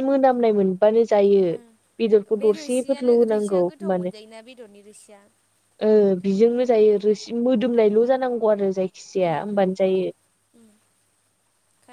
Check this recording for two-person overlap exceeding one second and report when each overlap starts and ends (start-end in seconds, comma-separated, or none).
2.4-4.2